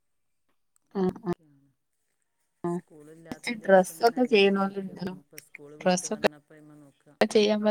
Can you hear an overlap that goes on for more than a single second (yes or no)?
yes